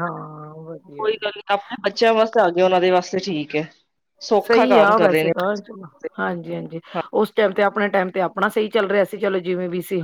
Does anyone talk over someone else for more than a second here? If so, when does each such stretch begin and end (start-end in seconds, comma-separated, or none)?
4.5-6.1